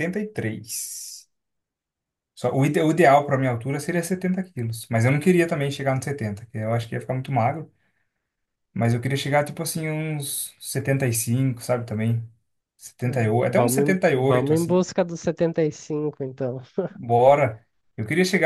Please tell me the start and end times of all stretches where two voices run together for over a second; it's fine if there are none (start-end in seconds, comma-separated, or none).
13.0-14.8